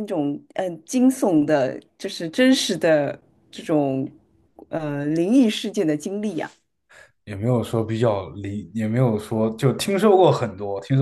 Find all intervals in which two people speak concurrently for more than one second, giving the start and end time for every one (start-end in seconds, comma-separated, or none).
none